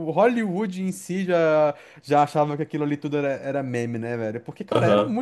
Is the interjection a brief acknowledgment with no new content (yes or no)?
yes